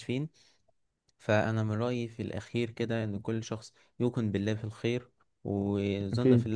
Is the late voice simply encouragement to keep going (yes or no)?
yes